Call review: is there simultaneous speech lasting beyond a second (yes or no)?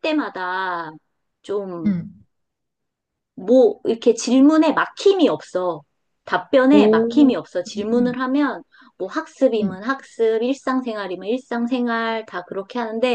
yes